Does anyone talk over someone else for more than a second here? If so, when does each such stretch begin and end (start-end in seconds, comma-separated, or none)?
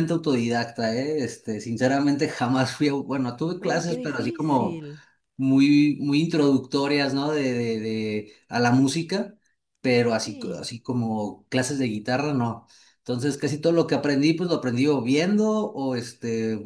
3.6-4.8